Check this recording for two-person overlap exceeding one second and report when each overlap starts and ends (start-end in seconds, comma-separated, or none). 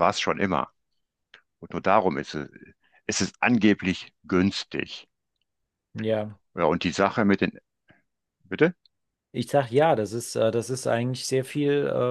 none